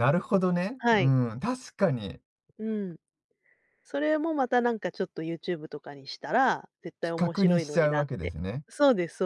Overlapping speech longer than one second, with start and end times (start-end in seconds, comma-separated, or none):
7.0-8.7